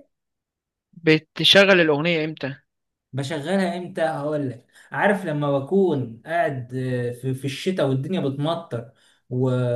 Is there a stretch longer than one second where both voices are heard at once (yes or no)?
no